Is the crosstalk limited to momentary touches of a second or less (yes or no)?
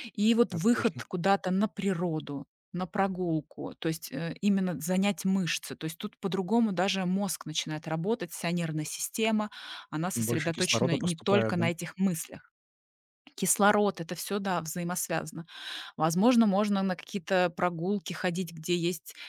no